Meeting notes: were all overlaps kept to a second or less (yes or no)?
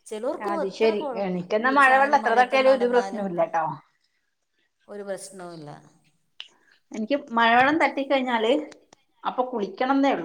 no